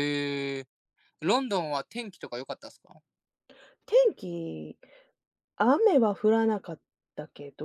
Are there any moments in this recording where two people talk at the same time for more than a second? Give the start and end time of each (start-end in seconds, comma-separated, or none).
none